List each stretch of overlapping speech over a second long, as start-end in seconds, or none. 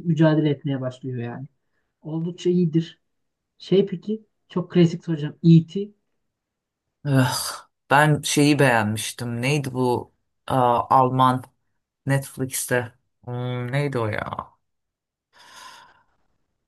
none